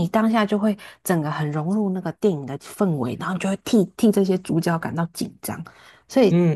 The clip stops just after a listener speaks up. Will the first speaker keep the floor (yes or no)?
no